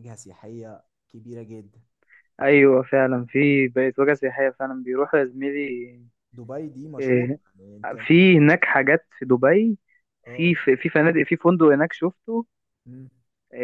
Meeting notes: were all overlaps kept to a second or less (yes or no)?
yes